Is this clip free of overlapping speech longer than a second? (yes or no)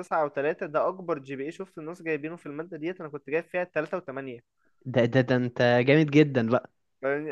yes